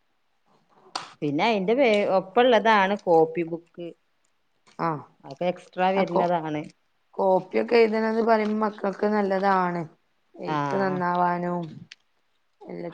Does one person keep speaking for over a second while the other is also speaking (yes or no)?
no